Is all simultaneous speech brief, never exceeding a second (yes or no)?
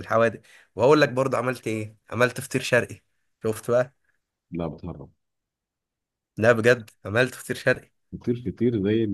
yes